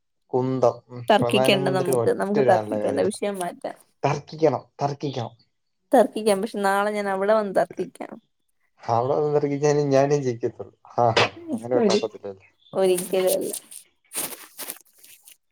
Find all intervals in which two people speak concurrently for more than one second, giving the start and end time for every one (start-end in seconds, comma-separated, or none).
1.1-3.2